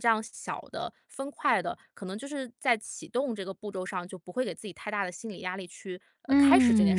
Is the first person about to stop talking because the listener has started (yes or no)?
yes